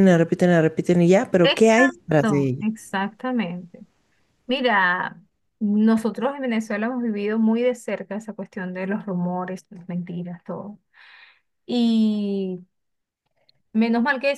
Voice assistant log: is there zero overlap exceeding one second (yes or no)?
no